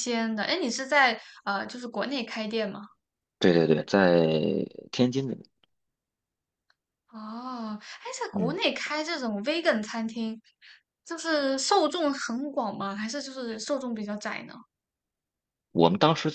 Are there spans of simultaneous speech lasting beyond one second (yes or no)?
no